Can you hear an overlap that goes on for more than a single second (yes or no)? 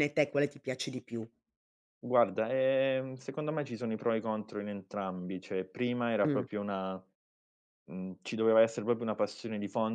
no